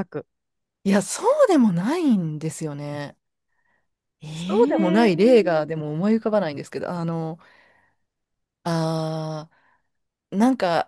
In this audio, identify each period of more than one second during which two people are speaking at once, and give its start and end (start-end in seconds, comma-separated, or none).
4.3-5.7